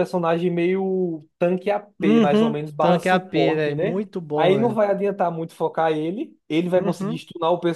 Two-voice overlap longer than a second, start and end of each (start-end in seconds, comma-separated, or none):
2.0-4.8